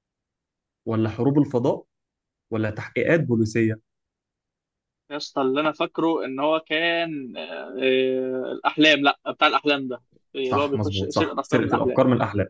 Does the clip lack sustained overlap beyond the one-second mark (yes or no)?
no